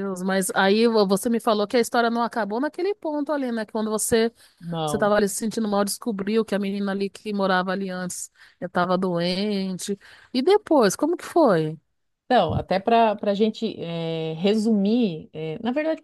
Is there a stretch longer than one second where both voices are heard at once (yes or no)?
no